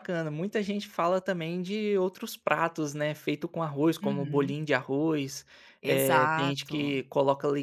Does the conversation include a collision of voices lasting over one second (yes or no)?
yes